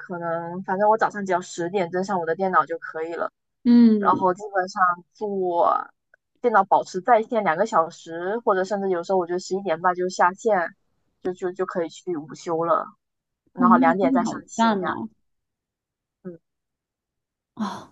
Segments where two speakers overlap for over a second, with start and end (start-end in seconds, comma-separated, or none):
13.6-14.9